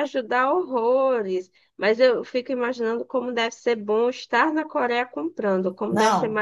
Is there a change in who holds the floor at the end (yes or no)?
yes